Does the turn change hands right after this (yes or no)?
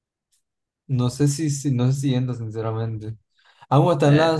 no